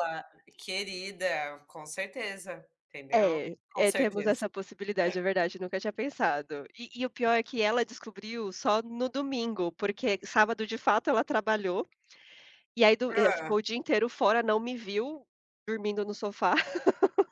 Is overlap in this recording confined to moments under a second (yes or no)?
no